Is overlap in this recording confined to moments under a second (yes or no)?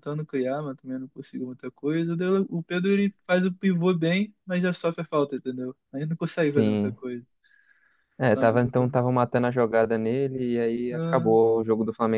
yes